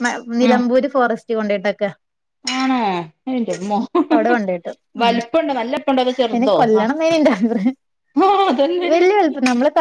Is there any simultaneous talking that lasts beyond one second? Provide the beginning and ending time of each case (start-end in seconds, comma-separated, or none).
none